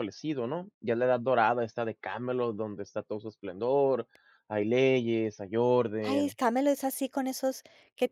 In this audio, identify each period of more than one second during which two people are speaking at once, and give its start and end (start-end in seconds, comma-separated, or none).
none